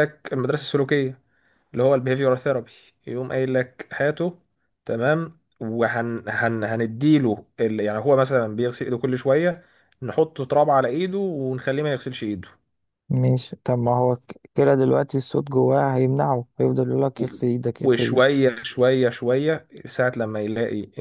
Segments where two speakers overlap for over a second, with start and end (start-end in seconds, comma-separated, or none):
none